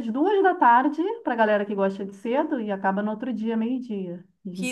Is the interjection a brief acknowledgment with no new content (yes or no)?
no